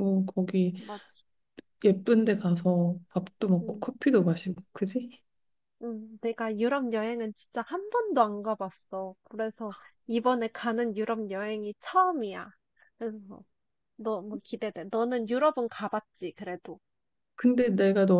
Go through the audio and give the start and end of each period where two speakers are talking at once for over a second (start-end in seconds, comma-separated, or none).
none